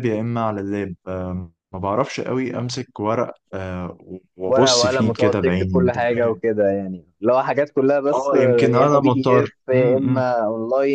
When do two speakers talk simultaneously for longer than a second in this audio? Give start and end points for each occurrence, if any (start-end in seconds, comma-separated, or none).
4.5-6.4, 8.1-10.2